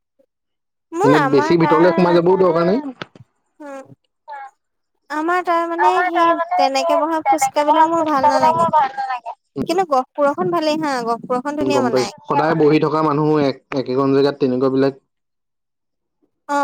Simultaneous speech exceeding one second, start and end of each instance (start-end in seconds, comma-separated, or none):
5.9-8.7